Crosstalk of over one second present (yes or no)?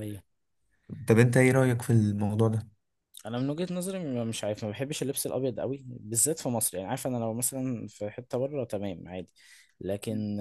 no